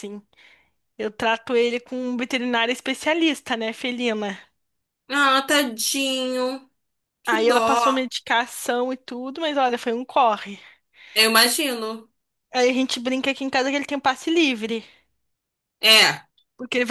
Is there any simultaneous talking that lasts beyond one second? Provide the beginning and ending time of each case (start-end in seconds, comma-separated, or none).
none